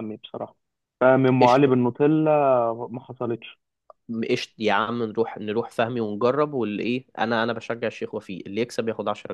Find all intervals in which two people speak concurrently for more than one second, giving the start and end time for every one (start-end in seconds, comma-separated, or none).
none